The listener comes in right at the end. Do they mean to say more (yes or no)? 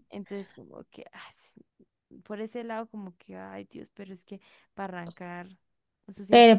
yes